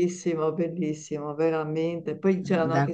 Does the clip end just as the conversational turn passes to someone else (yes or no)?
no